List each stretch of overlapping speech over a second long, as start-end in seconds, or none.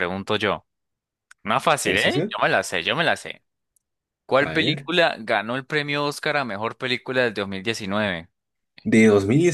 none